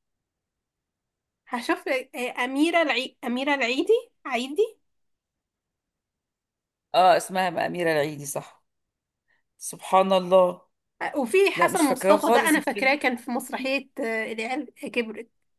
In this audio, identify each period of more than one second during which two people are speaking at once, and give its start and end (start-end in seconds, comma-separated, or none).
11.5-13.0